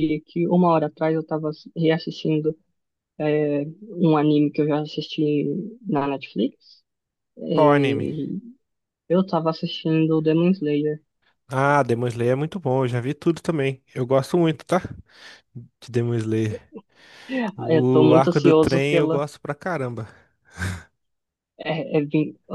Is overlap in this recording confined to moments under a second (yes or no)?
no